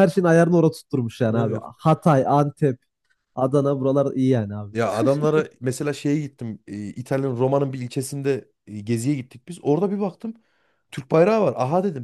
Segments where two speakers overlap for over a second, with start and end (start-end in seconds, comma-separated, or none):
none